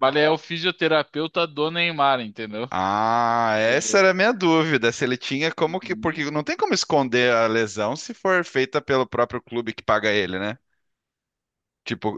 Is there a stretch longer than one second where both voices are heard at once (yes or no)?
no